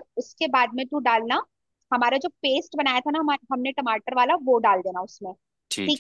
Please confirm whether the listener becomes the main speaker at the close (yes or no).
yes